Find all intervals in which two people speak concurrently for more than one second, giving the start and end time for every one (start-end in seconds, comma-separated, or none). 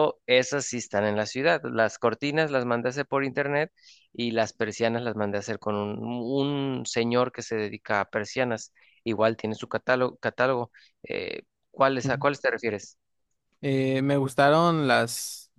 none